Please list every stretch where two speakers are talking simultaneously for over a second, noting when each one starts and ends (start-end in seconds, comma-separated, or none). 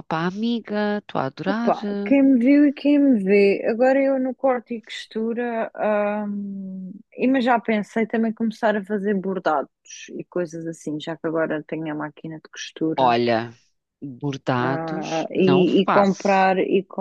14.7-16.5